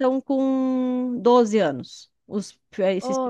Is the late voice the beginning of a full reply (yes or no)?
yes